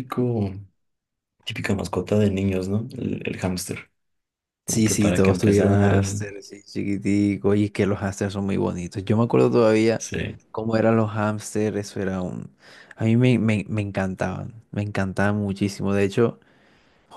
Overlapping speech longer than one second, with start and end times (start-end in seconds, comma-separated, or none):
4.7-6.0